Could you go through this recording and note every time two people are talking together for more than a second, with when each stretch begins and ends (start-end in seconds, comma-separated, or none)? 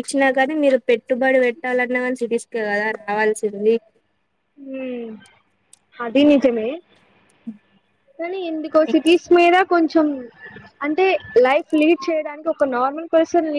none